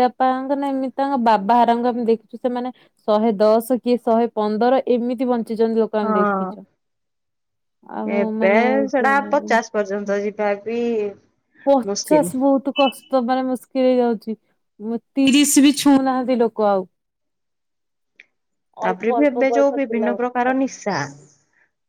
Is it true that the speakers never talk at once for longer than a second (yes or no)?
no